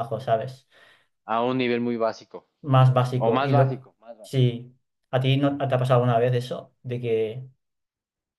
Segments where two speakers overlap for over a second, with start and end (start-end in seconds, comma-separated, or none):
3.1-4.5